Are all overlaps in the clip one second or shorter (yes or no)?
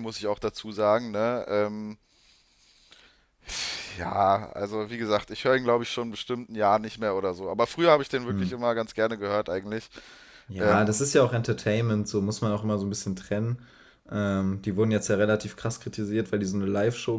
yes